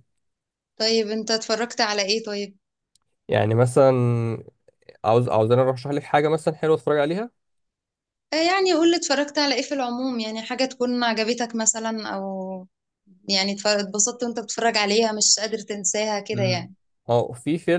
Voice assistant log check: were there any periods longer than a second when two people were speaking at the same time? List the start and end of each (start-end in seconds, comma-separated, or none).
none